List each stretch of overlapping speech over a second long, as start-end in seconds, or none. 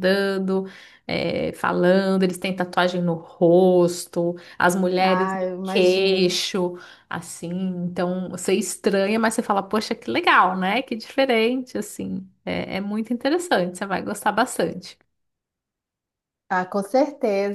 5.0-6.4